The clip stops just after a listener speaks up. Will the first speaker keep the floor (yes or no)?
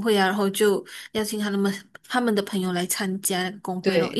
no